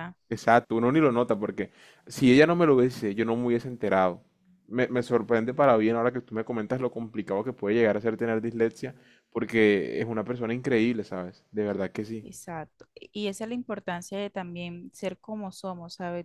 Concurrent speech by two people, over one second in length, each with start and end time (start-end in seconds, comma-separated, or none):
none